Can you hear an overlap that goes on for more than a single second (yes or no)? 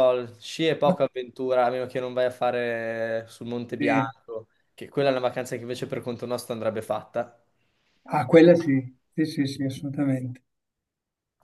no